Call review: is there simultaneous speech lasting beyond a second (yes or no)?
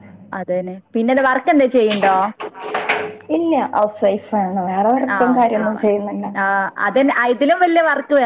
no